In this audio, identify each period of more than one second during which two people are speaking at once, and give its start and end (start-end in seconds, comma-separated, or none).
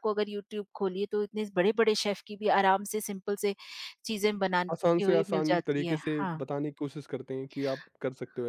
4.7-6.4